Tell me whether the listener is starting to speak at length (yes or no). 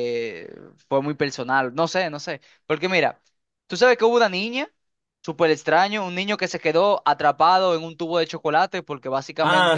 yes